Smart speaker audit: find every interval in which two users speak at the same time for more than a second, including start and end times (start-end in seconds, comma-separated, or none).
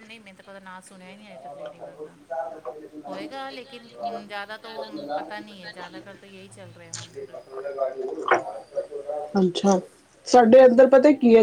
none